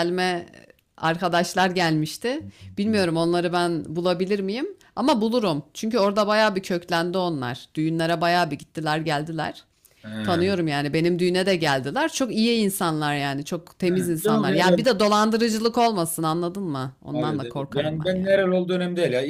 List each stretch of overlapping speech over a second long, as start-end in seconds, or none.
17.1-18.4